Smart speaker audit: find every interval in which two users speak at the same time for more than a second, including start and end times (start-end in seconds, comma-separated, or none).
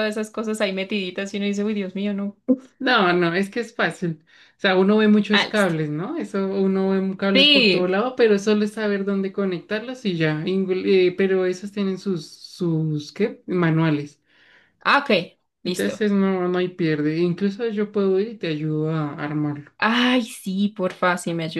none